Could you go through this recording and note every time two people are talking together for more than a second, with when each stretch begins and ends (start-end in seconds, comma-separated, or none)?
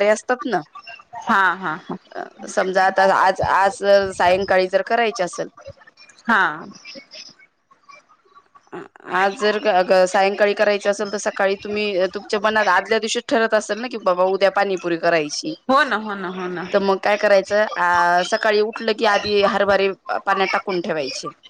none